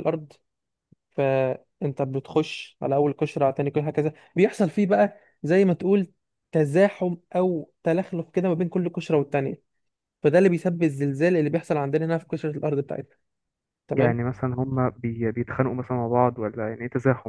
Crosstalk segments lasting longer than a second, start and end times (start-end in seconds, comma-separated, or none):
none